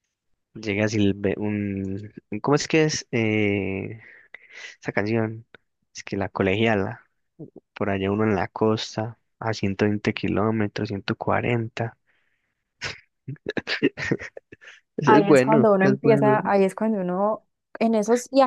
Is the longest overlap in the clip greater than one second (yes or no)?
yes